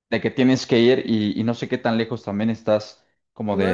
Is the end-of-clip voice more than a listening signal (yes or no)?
yes